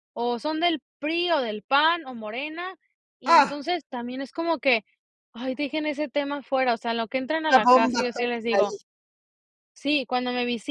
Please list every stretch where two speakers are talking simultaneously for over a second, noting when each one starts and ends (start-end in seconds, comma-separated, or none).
7.5-8.8